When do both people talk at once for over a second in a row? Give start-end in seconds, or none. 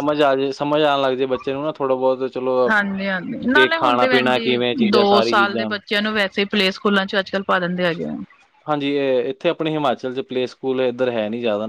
3.5-5.7